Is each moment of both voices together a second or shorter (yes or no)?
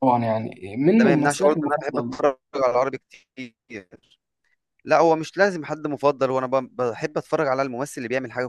no